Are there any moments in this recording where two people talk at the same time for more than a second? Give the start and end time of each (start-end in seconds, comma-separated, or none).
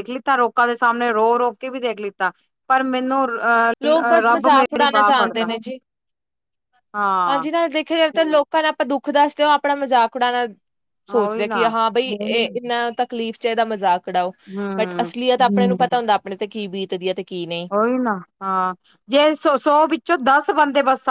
3.8-5.5